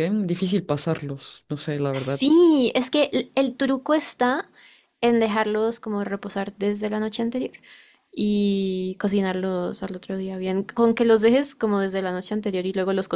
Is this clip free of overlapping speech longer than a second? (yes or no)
yes